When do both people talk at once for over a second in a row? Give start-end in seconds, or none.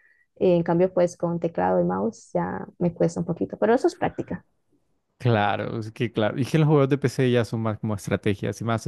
none